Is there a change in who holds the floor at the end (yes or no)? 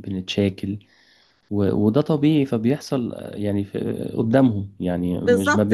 yes